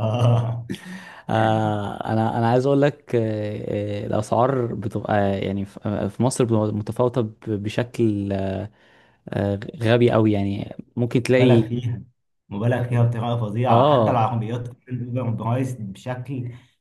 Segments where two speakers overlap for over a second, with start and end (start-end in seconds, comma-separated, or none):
none